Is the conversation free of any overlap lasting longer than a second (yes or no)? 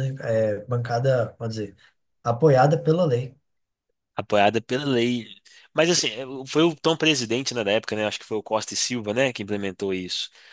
yes